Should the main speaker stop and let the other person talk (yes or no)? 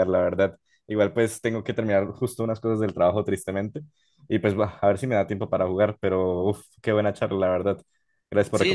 yes